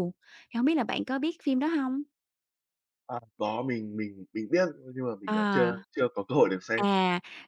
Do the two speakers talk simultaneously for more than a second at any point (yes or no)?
no